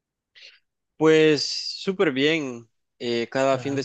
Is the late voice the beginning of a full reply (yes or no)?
no